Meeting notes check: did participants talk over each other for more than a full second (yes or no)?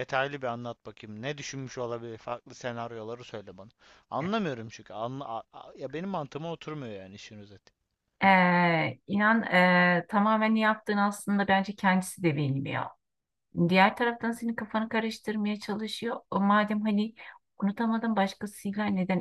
no